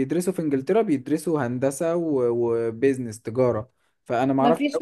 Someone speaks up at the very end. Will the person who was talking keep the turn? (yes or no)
no